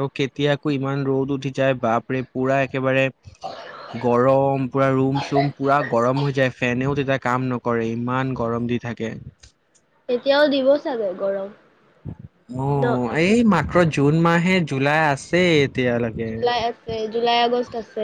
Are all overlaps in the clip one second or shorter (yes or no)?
yes